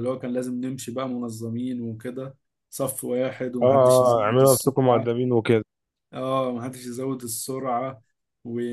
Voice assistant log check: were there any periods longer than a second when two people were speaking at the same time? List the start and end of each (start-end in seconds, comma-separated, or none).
3.6-5.1